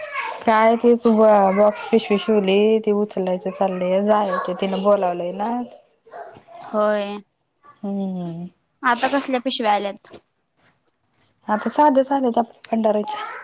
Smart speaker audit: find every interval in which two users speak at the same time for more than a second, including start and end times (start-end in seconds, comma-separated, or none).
none